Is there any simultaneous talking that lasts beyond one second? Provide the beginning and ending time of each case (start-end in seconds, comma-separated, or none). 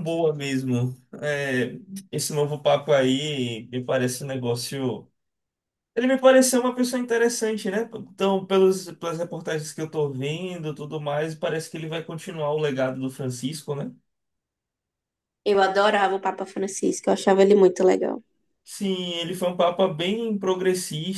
none